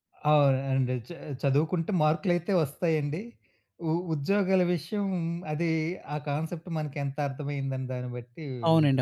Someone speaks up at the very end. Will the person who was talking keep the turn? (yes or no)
no